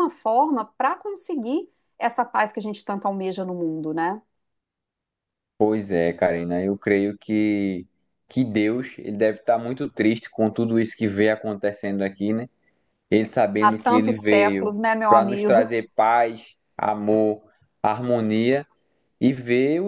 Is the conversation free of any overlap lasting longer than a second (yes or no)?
no